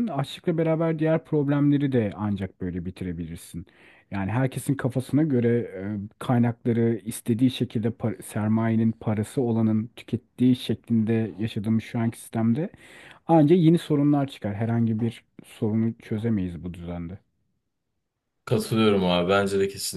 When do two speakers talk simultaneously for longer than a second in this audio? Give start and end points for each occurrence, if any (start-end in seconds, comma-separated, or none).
none